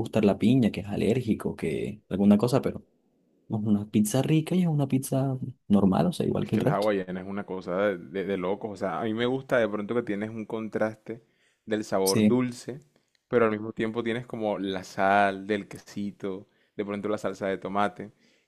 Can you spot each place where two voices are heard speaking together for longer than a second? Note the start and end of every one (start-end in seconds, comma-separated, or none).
none